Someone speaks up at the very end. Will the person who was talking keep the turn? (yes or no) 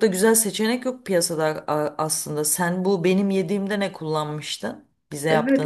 no